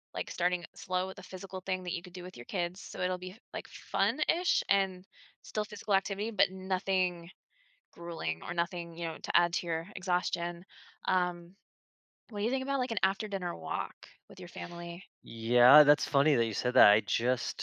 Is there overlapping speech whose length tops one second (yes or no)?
no